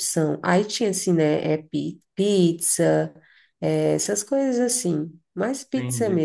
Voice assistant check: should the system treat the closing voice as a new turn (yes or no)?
yes